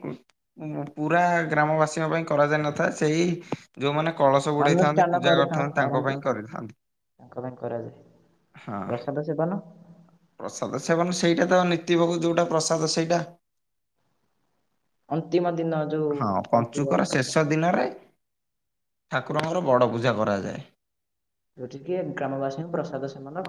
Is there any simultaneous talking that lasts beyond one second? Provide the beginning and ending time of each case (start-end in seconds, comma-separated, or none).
4.7-6.1